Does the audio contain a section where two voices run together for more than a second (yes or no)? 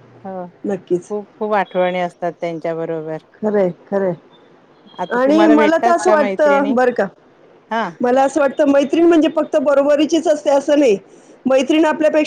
yes